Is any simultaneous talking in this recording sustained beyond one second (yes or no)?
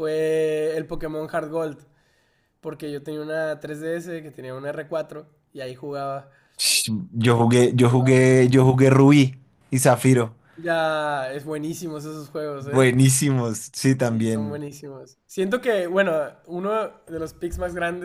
no